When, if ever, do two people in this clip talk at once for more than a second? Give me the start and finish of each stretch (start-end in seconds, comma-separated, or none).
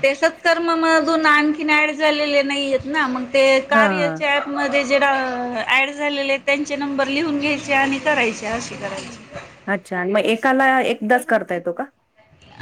none